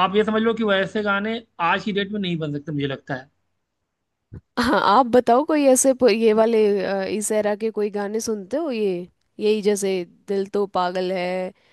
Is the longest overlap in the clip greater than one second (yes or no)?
no